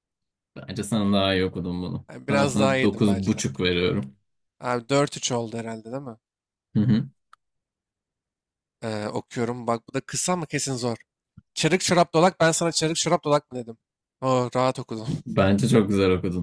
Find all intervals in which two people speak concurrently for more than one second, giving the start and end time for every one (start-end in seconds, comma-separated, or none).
2.1-3.4